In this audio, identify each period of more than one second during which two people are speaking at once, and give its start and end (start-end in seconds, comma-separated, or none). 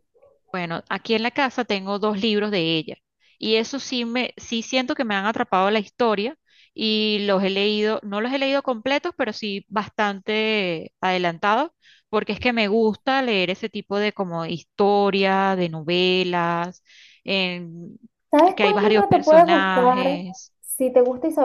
18.6-20.2